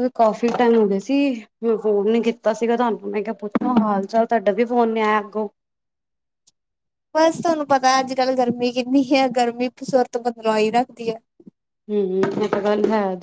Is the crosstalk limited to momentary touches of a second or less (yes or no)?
yes